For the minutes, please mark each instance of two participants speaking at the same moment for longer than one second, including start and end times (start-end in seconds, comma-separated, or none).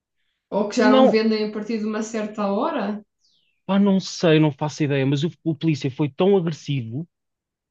none